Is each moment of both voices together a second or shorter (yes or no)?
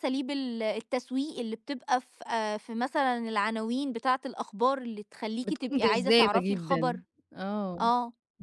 no